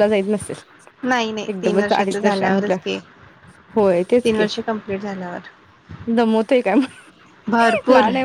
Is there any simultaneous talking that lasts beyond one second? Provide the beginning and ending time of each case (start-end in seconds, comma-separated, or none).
1.5-2.8